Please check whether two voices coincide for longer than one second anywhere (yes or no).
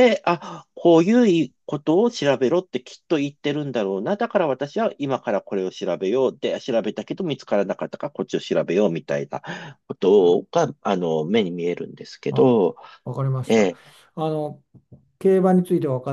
no